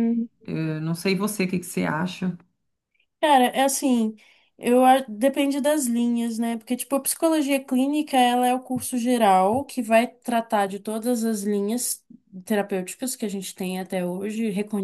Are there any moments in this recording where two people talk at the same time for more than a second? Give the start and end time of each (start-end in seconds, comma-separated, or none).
none